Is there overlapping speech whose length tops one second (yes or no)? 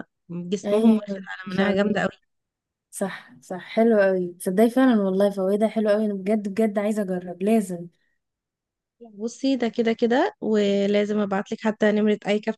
yes